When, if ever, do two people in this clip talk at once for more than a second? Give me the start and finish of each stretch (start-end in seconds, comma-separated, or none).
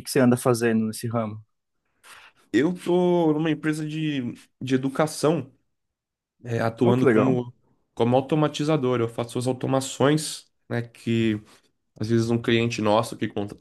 none